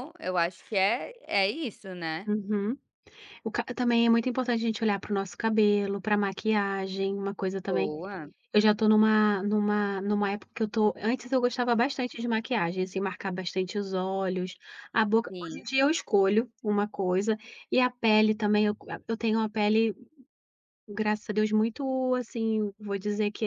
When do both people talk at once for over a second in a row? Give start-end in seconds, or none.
none